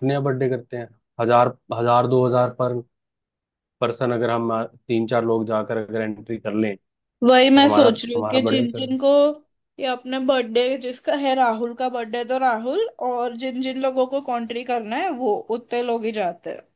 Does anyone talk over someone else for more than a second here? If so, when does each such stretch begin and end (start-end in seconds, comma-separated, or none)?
7.2-8.9